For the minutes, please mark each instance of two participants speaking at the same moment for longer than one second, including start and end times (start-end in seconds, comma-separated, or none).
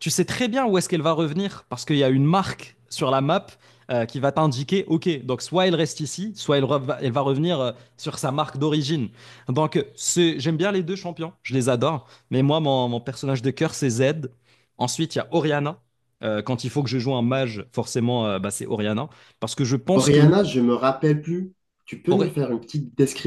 none